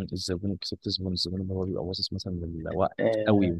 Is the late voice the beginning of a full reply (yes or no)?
yes